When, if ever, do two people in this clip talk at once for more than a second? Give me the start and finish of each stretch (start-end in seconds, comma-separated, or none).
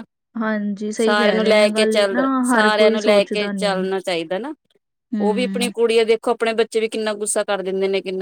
1.0-3.8